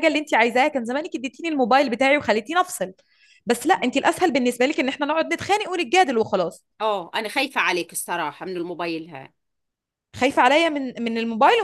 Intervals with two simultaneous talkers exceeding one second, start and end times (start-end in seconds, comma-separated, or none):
none